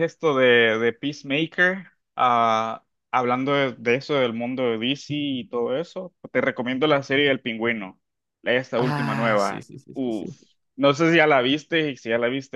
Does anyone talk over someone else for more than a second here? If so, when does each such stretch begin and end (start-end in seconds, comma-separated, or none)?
8.7-10.3